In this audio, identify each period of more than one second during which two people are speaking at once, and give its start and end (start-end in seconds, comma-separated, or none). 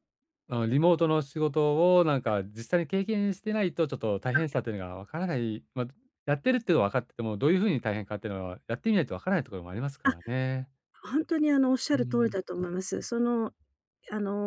none